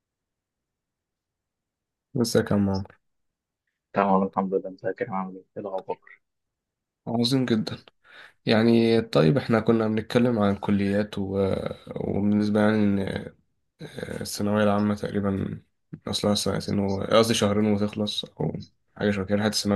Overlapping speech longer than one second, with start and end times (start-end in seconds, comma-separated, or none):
none